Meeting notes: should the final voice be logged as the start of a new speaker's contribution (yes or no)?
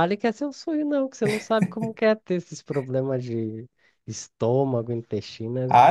yes